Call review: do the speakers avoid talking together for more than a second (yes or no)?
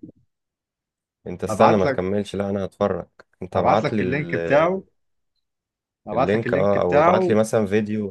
no